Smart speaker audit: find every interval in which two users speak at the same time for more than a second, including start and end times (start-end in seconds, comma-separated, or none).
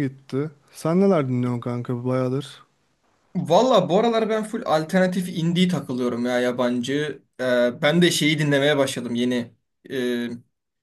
none